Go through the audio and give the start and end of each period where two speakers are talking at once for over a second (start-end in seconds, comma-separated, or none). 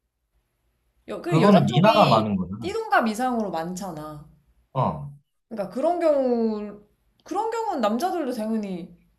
1.3-2.7